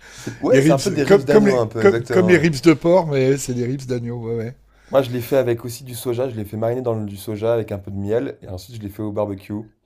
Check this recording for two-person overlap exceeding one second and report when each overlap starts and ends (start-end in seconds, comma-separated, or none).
0.5-2.4